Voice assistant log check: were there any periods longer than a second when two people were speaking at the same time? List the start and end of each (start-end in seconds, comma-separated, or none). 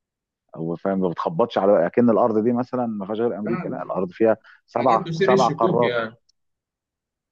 4.8-6.0